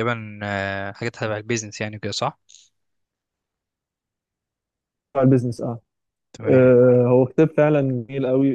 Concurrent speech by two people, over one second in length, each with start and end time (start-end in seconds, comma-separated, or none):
none